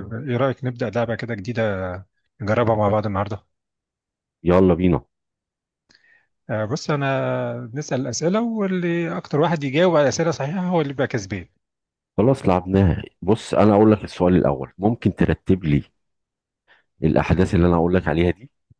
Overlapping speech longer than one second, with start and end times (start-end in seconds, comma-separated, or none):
none